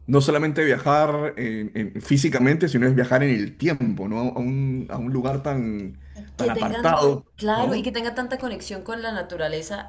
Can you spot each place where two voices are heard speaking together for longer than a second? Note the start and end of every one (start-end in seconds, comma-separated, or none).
6.2-7.9